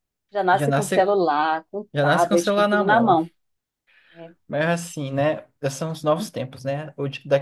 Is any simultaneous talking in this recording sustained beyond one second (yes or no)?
yes